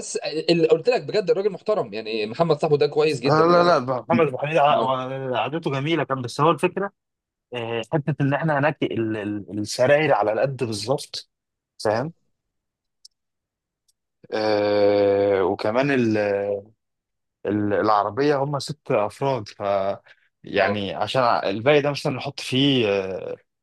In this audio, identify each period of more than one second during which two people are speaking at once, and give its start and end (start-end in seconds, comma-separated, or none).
none